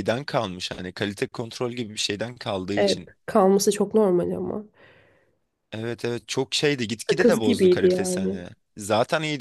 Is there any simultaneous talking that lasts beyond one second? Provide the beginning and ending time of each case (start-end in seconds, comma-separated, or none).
7.1-8.4